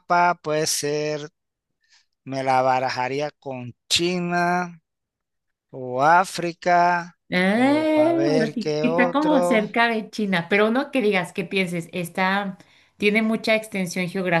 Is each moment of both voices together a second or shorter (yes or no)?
no